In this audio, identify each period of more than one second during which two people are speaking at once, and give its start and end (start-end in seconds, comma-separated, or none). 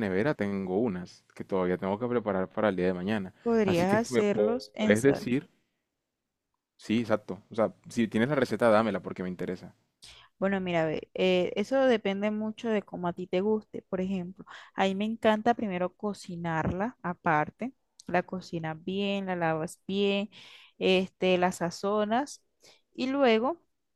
3.4-5.2